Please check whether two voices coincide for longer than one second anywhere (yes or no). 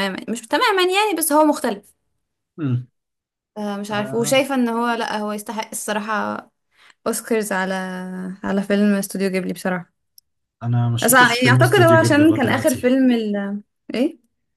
yes